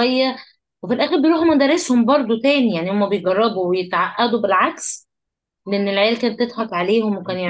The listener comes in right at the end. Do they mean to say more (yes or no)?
yes